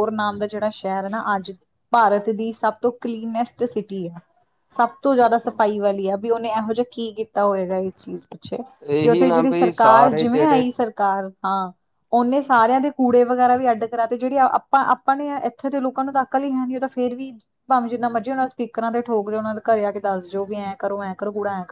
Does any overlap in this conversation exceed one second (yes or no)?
yes